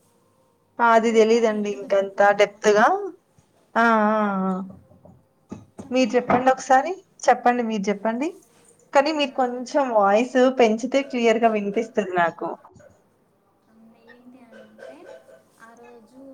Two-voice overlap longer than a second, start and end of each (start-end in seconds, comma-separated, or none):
1.0-2.7